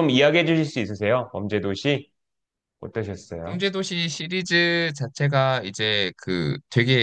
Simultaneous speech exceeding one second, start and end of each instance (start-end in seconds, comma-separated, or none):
none